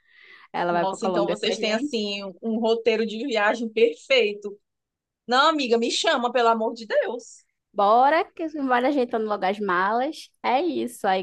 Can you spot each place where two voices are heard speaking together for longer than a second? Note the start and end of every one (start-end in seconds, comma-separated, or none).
0.7-2.0